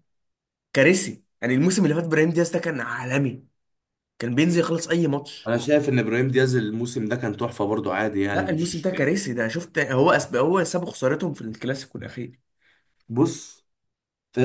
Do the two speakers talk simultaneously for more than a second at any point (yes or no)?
no